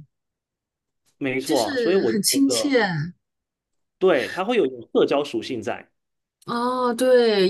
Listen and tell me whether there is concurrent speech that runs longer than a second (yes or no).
yes